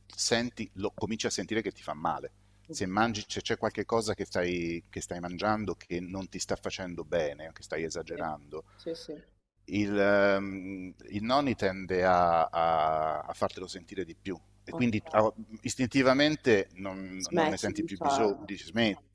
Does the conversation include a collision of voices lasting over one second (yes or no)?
yes